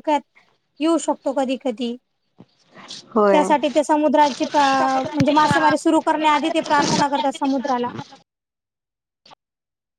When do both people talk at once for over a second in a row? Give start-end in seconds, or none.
4.2-7.7